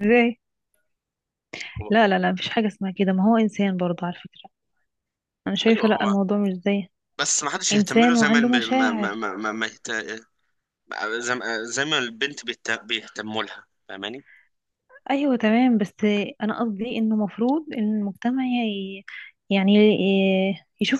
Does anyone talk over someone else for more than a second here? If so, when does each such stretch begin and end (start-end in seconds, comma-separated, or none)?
7.7-9.2